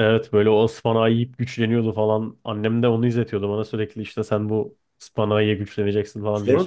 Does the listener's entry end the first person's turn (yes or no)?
yes